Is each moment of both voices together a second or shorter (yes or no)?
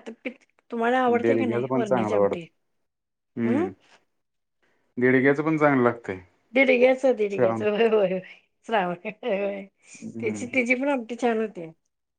no